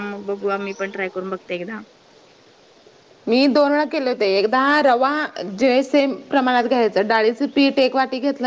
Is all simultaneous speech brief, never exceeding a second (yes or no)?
yes